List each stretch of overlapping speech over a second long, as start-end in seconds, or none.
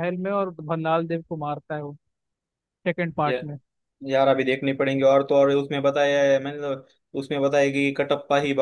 none